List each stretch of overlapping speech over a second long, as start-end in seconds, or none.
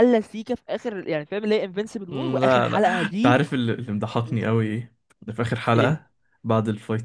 2.1-3.4